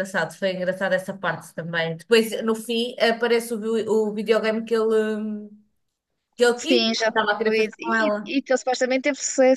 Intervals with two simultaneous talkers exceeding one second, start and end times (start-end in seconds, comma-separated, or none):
6.5-8.3